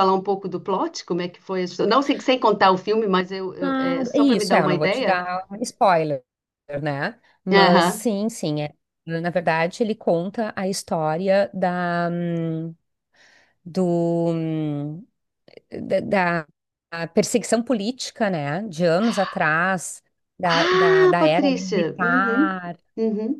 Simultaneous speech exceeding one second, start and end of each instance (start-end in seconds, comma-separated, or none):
3.6-5.2, 20.4-22.6